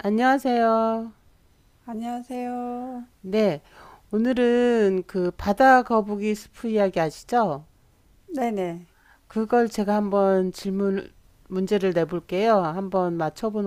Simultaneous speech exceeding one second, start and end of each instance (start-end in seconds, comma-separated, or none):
none